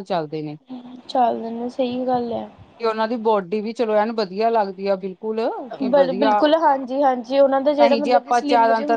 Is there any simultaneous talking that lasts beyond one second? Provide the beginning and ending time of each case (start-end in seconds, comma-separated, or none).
none